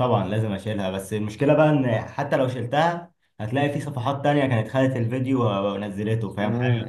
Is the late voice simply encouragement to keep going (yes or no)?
no